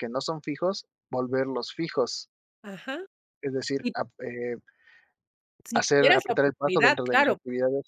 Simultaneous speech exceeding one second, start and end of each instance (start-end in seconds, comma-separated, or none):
5.7-7.4